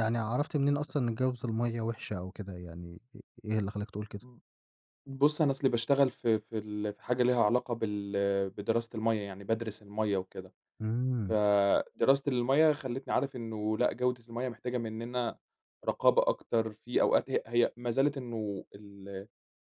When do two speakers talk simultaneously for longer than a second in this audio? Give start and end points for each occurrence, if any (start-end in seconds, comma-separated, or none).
none